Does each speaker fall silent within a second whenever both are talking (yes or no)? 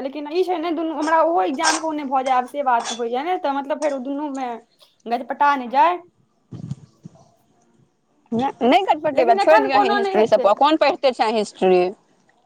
no